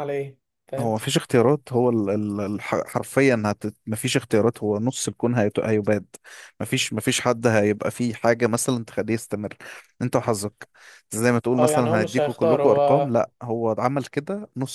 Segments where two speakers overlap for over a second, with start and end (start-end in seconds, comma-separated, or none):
11.6-13.1